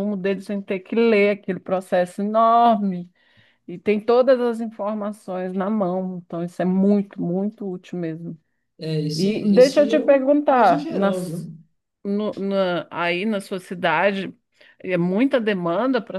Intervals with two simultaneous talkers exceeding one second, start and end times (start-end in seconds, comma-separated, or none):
9.1-11.5